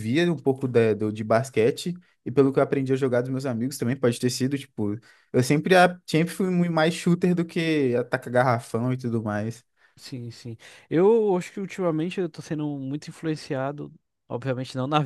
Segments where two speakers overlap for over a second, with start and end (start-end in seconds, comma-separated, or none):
none